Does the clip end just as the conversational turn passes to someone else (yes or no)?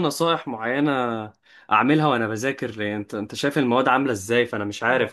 no